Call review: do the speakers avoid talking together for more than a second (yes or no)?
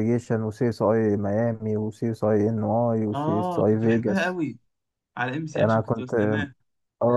no